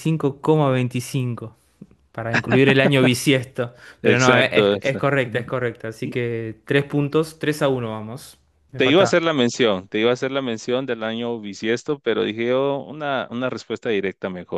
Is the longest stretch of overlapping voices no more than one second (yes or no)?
no